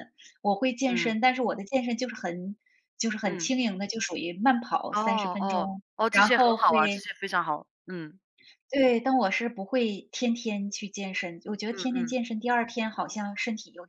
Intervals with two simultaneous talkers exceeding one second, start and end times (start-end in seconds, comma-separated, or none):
4.9-7.0